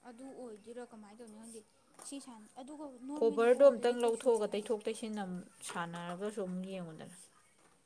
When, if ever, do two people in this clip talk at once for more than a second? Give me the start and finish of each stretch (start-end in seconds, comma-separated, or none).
3.2-4.7